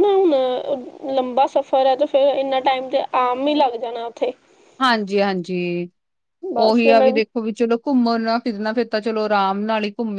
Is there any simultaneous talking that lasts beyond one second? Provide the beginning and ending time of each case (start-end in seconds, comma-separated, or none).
none